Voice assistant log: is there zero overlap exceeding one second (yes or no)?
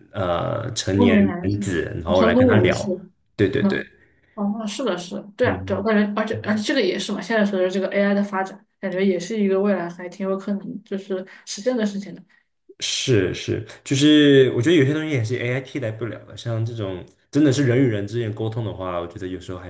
no